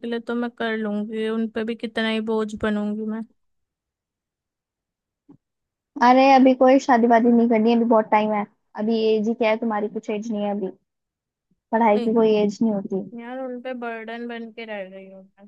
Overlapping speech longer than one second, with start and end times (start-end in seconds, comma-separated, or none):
none